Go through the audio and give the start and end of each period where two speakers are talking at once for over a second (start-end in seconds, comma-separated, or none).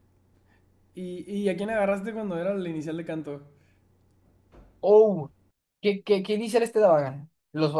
none